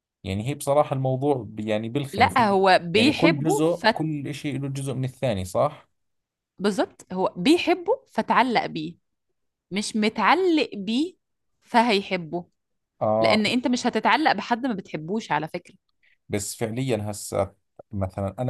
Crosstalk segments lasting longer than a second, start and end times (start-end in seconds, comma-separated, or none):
2.1-4.0